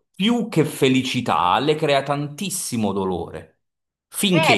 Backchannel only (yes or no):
no